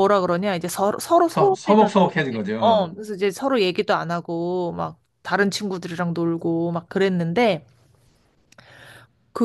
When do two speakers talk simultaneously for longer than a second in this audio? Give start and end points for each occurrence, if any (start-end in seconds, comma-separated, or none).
none